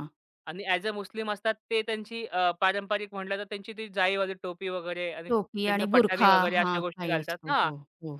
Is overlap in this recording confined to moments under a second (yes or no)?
no